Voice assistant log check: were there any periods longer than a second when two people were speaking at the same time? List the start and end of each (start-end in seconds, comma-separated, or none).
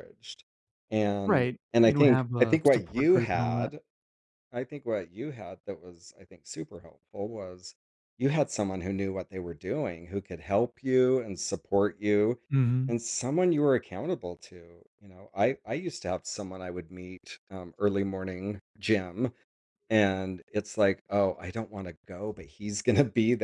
1.2-3.7